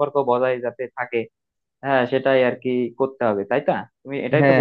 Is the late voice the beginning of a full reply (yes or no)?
yes